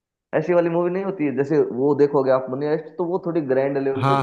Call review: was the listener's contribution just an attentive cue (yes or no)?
no